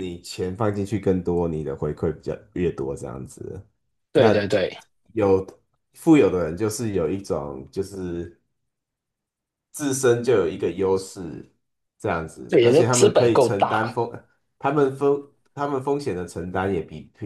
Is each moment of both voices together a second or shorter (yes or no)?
no